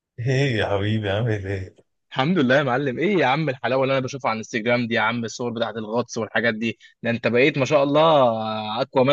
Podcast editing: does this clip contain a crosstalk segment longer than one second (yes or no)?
no